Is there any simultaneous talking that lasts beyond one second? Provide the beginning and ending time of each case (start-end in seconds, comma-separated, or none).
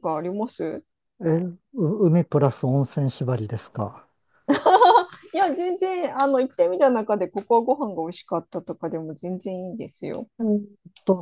none